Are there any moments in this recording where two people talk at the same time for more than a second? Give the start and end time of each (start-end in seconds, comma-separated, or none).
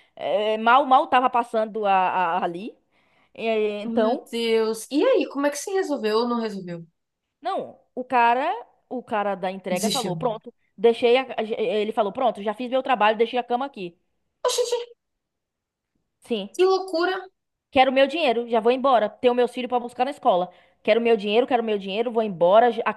none